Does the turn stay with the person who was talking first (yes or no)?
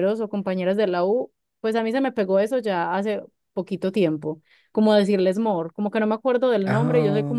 yes